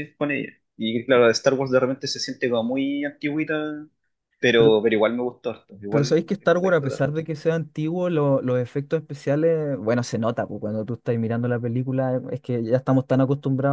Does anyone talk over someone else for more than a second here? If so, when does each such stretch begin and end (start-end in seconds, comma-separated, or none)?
5.9-7.2